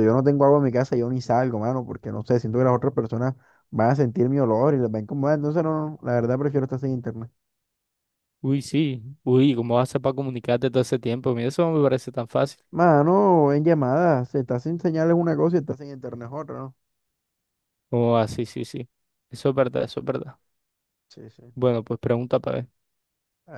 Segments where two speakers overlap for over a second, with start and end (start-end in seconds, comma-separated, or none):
none